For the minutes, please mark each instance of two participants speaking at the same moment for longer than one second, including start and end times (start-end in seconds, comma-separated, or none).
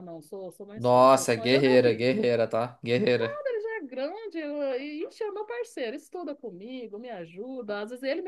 0.8-2.1